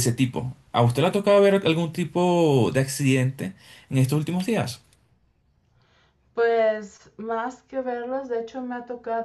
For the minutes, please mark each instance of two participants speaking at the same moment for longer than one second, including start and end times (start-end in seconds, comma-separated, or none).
none